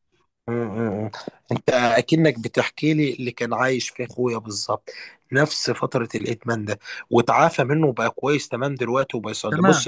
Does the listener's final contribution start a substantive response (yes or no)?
no